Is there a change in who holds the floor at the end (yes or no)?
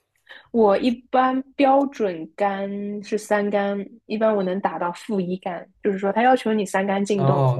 yes